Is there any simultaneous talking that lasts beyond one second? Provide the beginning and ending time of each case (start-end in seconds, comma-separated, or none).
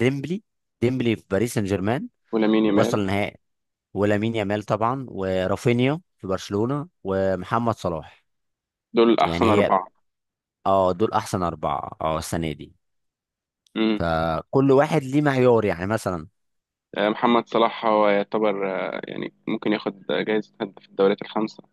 none